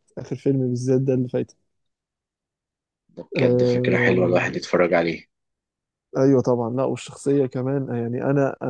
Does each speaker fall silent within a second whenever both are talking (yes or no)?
no